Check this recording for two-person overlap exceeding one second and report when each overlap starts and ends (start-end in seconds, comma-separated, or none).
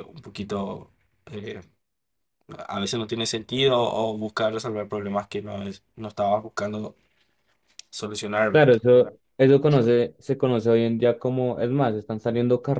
none